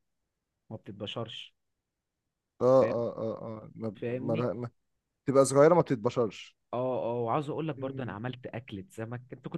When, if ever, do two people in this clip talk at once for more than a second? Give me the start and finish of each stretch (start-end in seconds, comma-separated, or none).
none